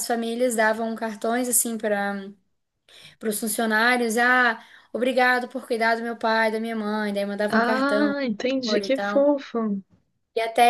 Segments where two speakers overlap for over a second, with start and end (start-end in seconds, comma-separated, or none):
7.5-9.3